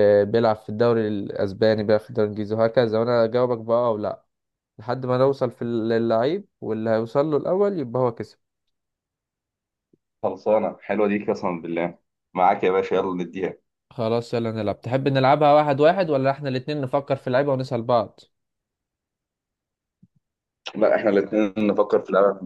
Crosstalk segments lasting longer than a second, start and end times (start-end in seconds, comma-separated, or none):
none